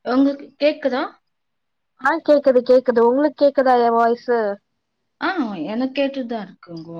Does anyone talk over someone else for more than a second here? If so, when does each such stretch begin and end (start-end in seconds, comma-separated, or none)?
none